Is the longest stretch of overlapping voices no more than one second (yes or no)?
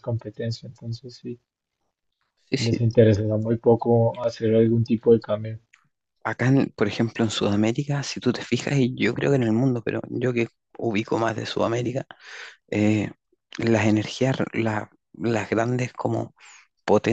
yes